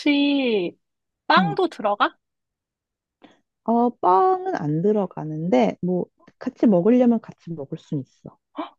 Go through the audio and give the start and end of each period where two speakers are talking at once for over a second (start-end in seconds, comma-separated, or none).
none